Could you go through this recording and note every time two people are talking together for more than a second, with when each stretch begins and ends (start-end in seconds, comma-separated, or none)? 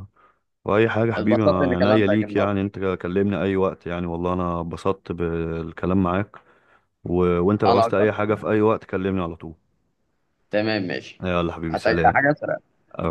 1.1-2.5